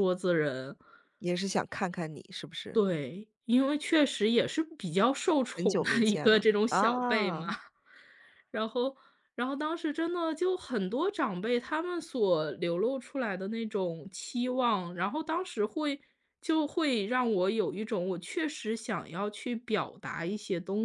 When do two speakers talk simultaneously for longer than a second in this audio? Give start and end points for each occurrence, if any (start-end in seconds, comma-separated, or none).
5.5-7.5